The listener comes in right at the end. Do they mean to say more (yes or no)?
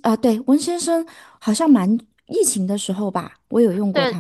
yes